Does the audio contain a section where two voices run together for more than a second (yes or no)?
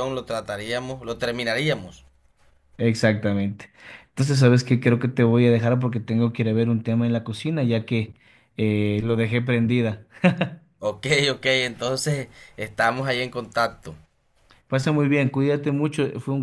no